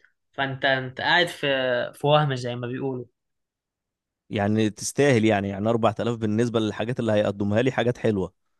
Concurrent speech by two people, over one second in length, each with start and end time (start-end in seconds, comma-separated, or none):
none